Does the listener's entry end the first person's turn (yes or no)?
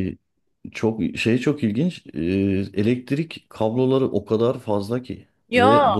no